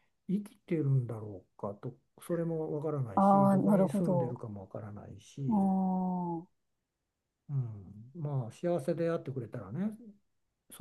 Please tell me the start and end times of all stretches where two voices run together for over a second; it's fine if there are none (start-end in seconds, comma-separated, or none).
3.1-4.4